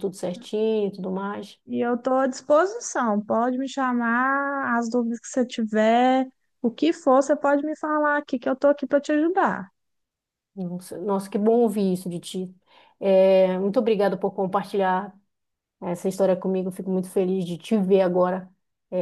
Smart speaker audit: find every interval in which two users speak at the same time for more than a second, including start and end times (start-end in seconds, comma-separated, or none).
none